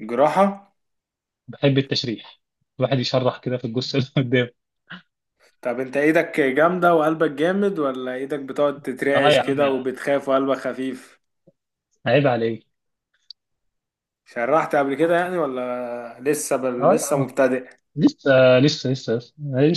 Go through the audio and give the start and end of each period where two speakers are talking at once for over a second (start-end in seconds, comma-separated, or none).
none